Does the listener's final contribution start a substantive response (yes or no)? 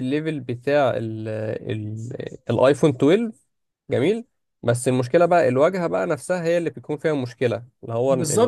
yes